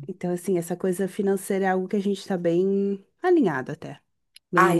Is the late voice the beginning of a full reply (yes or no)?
yes